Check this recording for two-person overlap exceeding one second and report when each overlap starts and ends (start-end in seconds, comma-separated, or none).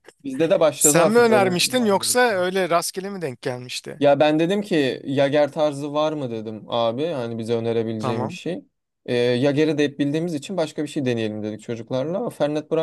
0.8-2.5